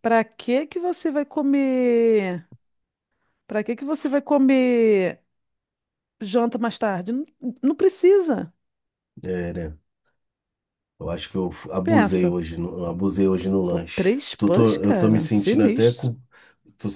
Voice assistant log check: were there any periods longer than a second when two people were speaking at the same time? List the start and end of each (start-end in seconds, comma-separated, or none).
13.7-16.1